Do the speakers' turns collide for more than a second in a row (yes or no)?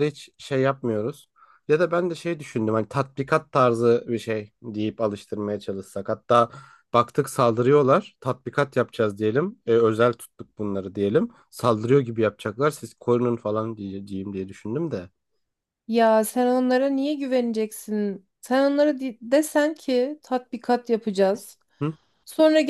no